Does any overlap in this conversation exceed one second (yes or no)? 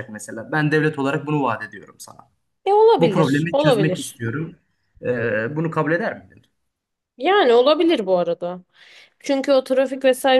yes